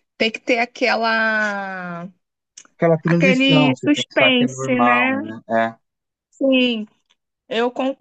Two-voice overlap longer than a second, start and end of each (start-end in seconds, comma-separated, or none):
3.0-5.2